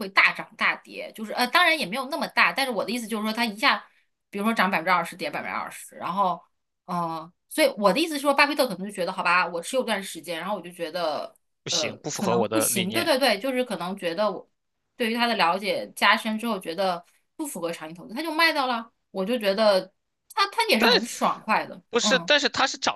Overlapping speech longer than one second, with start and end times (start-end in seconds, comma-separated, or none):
11.7-13.1